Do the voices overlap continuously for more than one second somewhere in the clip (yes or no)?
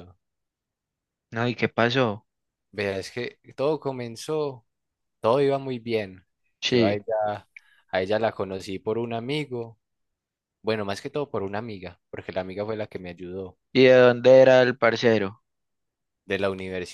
no